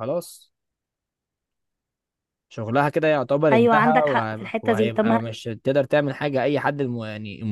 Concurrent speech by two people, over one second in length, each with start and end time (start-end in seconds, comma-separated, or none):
3.5-5.2